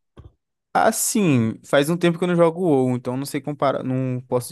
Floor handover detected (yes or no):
no